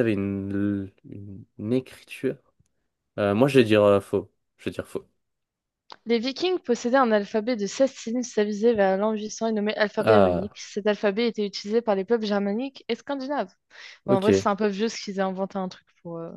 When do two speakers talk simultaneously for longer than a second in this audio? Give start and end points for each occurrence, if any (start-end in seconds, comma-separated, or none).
none